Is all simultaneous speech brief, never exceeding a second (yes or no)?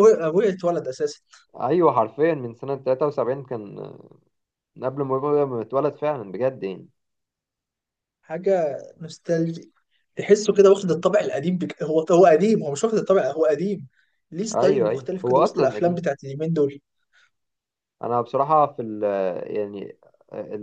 no